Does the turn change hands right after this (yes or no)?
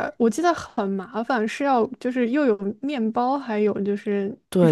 yes